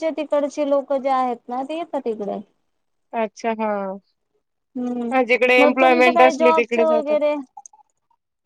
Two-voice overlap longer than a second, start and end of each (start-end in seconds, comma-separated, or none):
5.6-7.2